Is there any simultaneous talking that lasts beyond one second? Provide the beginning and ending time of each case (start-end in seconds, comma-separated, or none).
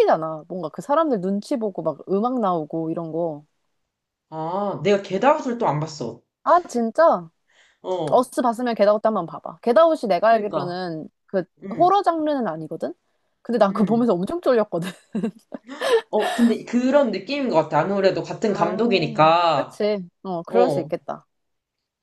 none